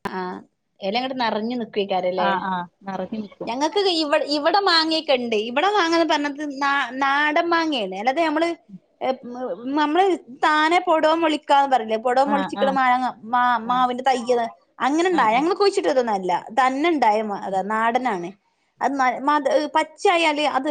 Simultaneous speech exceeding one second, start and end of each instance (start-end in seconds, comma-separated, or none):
none